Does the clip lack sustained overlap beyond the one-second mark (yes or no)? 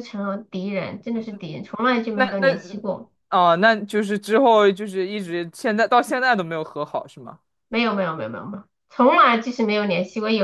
yes